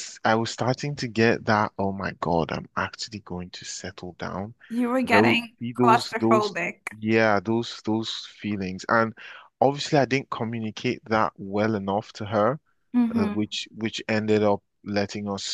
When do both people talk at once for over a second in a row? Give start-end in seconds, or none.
5.0-6.5